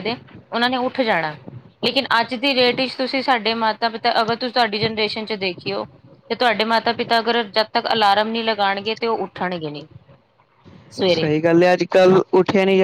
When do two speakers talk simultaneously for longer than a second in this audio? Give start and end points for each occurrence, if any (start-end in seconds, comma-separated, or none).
none